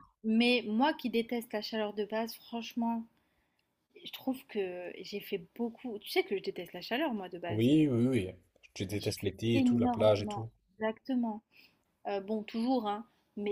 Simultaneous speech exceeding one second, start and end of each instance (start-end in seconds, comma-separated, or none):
8.9-10.5